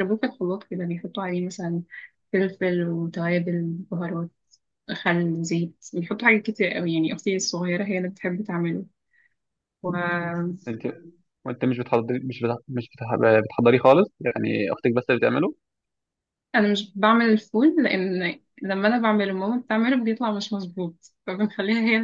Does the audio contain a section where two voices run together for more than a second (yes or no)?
no